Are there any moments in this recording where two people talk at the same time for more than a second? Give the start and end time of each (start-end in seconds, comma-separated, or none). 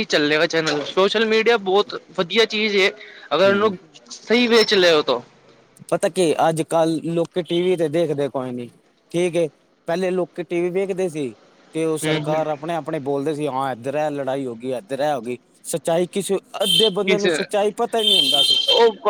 none